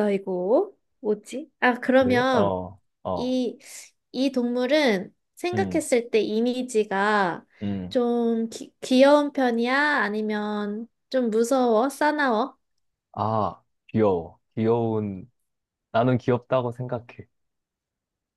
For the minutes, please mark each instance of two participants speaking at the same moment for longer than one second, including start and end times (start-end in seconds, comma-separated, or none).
none